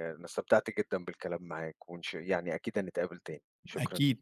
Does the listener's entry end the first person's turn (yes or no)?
yes